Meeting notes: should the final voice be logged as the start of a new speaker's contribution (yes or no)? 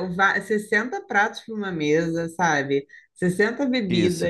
no